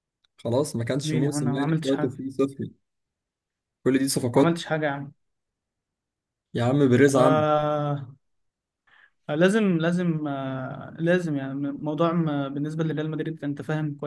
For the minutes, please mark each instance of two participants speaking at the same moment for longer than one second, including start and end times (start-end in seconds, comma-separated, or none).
1.0-2.2